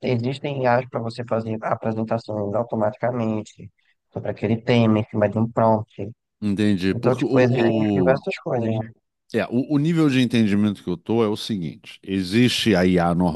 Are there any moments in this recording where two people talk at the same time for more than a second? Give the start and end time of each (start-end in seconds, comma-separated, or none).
6.9-8.2